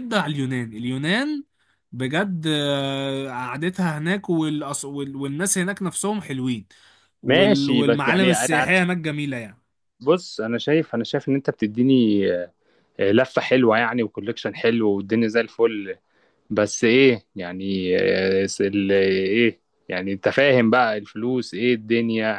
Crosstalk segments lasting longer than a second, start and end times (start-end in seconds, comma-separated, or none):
7.3-8.8